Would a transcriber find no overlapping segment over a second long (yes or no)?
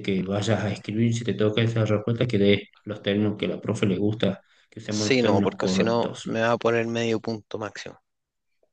no